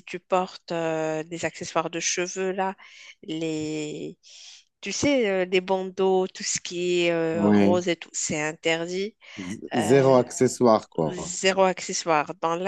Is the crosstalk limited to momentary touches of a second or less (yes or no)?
yes